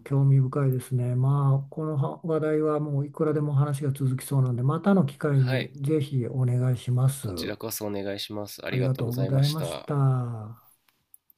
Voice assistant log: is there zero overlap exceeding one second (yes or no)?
no